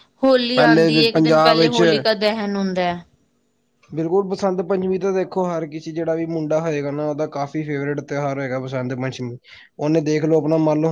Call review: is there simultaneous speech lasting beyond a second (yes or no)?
yes